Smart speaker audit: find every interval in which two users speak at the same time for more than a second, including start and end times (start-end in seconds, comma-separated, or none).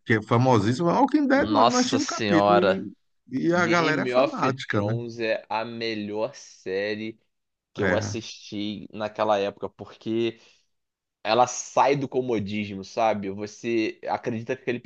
1.3-2.9, 3.5-4.9